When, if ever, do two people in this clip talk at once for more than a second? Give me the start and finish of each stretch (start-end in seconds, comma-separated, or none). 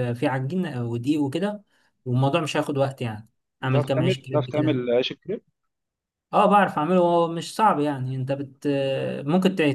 3.6-4.8